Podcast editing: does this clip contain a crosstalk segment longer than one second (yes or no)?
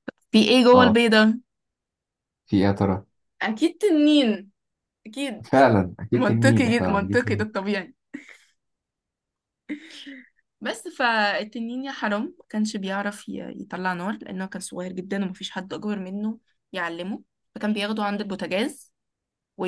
yes